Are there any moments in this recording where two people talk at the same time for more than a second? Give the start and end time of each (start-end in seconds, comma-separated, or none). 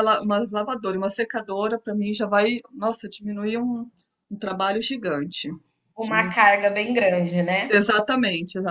none